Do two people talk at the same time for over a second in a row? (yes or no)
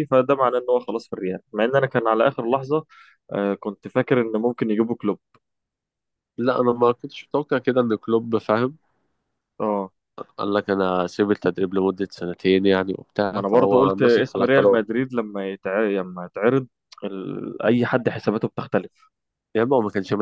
yes